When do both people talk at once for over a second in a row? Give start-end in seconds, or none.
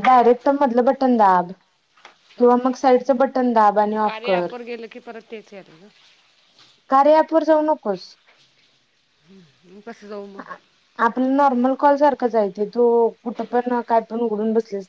2.4-4.5